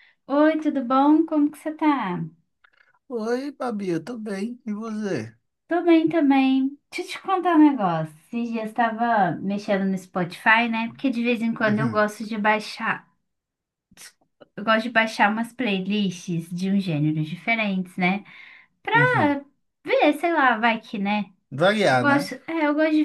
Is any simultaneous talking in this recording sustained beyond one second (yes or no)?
no